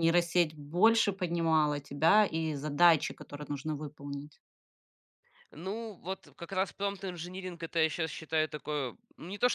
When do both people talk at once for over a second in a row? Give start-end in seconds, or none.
none